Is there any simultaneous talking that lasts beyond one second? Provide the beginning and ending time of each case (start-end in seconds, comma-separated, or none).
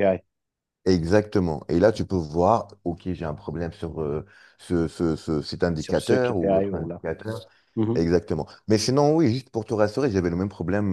5.8-7.0